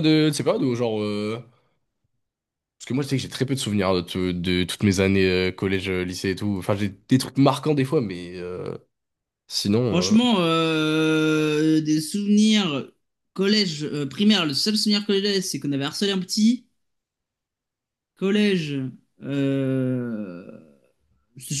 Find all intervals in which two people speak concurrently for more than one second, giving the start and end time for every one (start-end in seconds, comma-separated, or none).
none